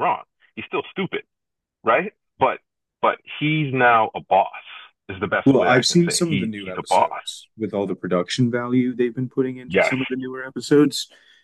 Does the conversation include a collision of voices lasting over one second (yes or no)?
yes